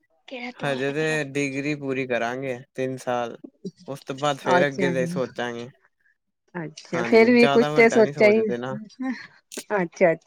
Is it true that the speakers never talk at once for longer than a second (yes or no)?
no